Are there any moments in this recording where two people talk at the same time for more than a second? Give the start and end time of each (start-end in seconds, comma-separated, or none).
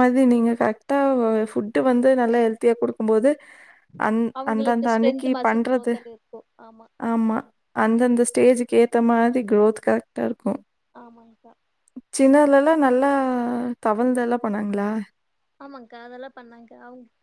4.4-5.9